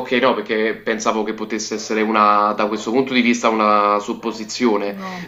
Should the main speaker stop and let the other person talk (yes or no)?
no